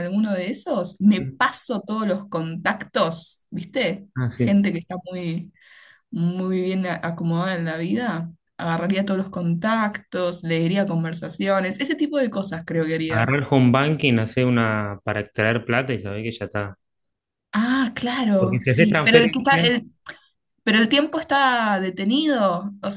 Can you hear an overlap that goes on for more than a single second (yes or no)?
yes